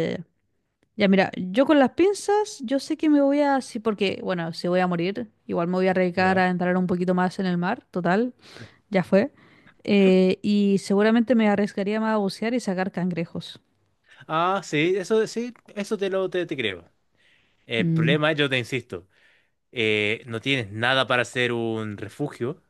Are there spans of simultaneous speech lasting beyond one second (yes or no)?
no